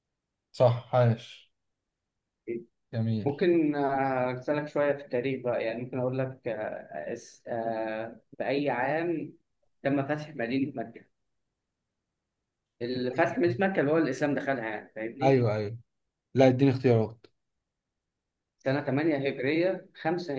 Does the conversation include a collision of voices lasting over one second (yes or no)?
no